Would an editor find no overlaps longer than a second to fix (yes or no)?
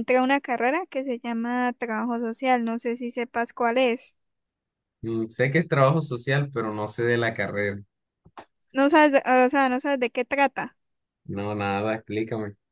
yes